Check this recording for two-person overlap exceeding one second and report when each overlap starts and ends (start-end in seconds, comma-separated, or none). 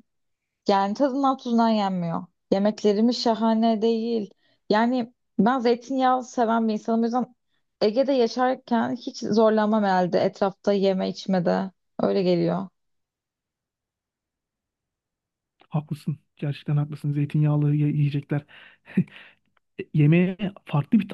none